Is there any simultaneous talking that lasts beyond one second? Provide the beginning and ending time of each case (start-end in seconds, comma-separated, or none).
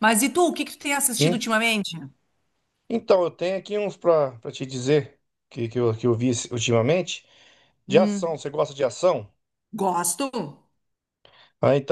none